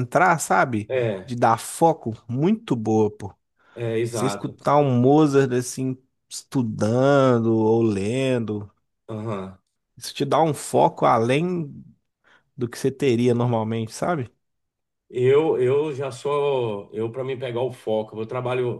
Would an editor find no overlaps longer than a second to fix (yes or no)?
yes